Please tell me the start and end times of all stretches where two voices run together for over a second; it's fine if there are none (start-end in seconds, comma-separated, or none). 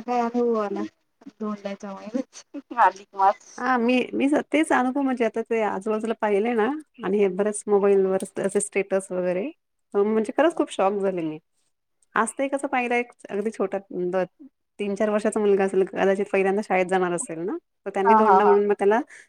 none